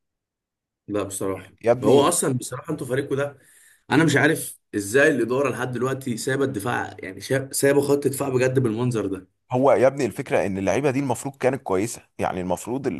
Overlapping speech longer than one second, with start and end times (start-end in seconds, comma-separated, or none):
none